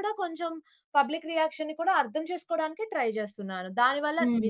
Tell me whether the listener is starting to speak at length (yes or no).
no